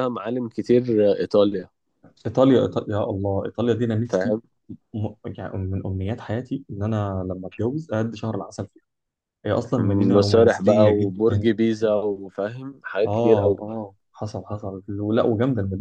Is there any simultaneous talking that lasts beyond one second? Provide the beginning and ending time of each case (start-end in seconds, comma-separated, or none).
10.1-11.5